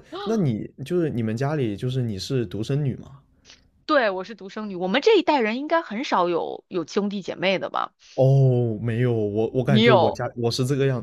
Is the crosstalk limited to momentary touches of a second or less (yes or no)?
yes